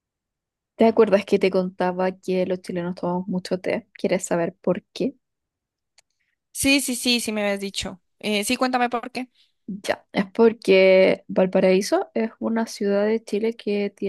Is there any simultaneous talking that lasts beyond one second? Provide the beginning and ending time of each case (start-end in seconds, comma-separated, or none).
none